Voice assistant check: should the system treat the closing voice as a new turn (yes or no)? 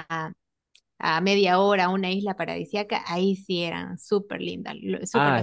yes